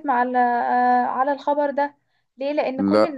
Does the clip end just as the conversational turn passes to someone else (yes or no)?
no